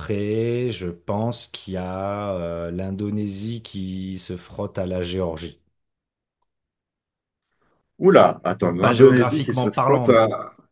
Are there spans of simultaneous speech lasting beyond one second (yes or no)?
yes